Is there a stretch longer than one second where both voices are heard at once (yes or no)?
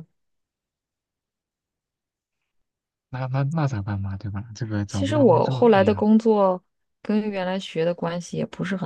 yes